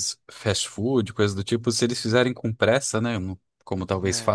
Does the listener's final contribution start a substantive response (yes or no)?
no